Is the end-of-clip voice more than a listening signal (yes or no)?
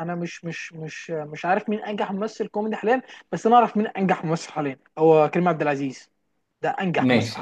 yes